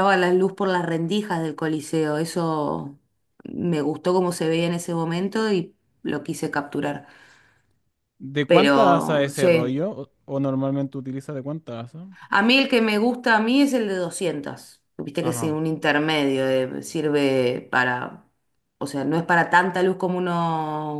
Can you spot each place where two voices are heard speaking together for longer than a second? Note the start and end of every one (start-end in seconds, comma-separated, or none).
8.5-9.8